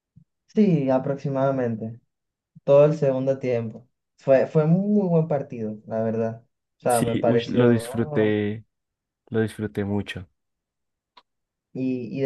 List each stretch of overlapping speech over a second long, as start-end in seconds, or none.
6.9-8.4